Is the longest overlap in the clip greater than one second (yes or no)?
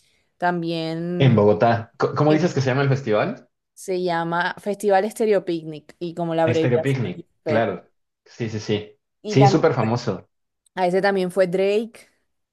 yes